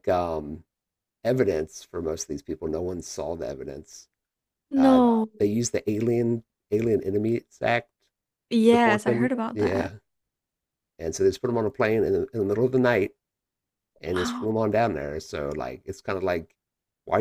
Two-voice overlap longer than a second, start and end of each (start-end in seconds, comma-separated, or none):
8.7-9.9